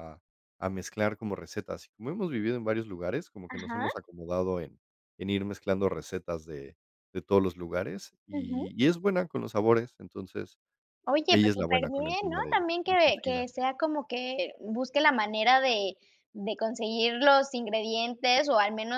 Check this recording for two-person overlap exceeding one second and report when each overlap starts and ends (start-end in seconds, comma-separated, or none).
11.3-13.5